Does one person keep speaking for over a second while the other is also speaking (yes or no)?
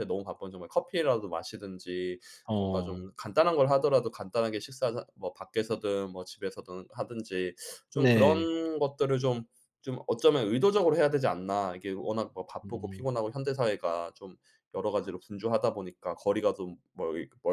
no